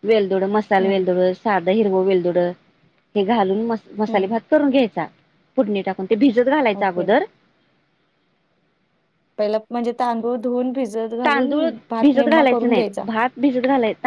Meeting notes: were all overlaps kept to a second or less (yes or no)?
yes